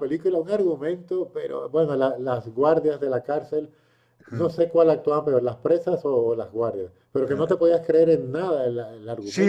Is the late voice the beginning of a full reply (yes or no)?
yes